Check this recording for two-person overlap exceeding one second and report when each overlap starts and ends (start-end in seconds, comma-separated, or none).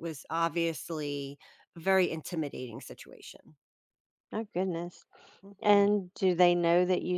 none